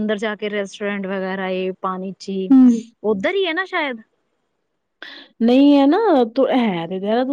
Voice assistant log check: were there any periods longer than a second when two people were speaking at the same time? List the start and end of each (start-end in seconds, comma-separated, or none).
none